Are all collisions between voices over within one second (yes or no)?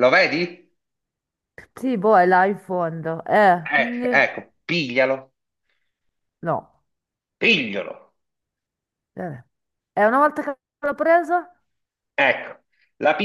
yes